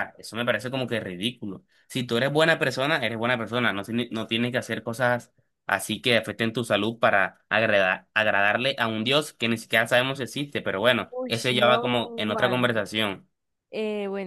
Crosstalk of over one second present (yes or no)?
yes